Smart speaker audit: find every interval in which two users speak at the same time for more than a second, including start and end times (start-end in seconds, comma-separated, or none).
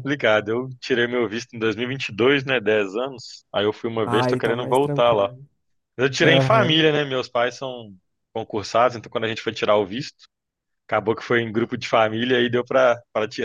4.1-5.3